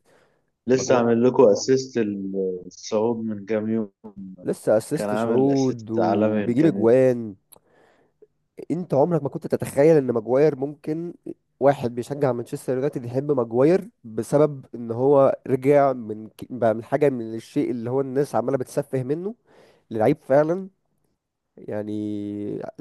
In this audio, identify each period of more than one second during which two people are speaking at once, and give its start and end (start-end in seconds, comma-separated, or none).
5.0-6.8